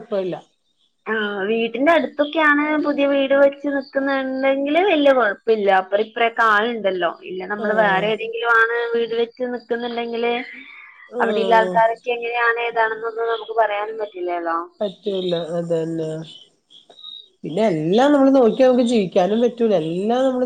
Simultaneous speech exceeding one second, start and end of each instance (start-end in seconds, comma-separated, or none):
none